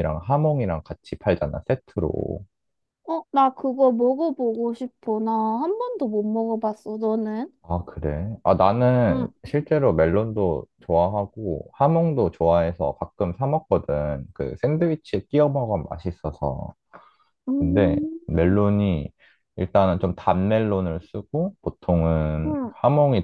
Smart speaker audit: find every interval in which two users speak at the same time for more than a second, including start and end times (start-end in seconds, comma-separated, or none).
none